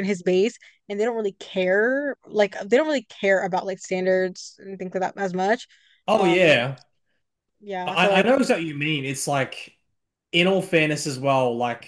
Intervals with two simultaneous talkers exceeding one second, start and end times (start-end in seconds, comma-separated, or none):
none